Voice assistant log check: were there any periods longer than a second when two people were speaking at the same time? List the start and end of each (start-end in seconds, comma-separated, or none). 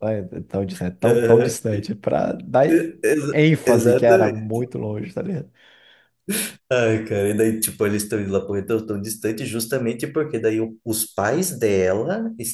3.3-4.6